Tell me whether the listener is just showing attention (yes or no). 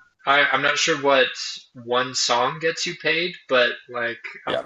yes